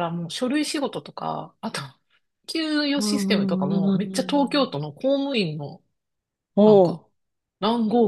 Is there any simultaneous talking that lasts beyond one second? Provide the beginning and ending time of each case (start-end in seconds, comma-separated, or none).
3.0-4.8